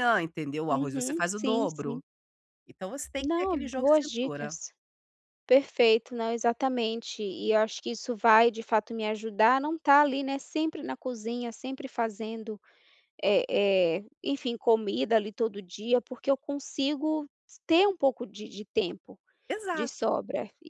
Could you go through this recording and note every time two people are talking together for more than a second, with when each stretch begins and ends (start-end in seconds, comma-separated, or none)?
0.7-2.0, 3.2-4.6